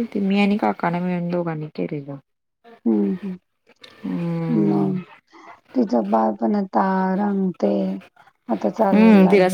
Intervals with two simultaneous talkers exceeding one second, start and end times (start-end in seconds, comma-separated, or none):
none